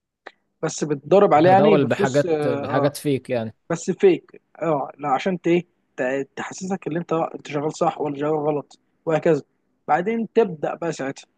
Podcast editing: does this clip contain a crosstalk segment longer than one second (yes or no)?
yes